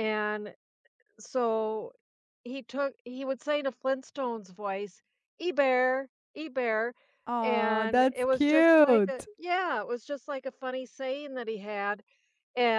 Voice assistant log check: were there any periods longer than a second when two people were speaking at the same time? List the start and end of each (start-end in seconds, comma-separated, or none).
7.4-9.3